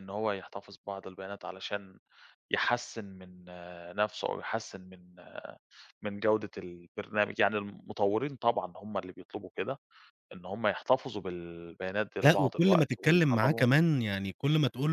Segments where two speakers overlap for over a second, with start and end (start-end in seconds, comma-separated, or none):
12.2-13.6